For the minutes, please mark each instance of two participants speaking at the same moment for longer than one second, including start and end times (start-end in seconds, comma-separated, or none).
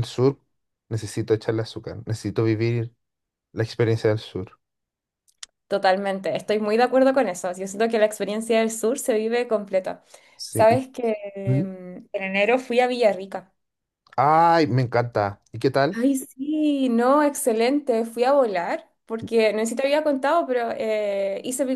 none